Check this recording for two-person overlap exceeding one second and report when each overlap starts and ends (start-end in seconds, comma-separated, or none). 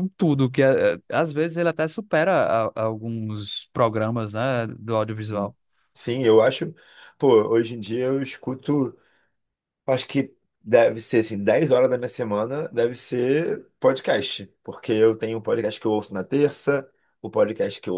none